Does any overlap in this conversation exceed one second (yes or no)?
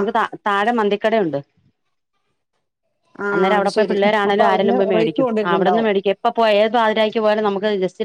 yes